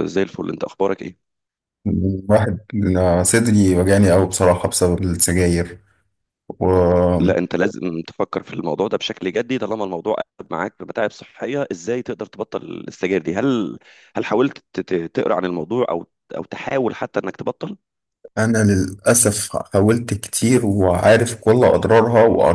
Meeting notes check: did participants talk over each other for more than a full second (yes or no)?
no